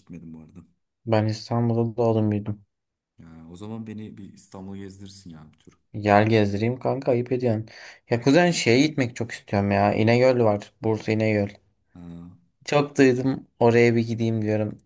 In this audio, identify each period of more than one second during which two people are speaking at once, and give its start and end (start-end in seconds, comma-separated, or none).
none